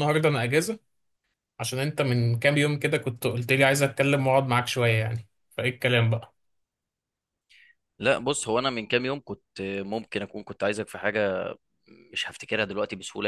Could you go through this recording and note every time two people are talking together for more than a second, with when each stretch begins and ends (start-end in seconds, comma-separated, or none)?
none